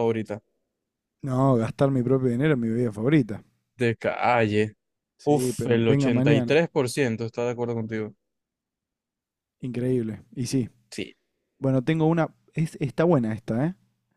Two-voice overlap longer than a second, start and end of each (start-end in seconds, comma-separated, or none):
5.2-6.6